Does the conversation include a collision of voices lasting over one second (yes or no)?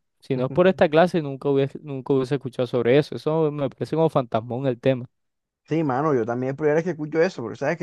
no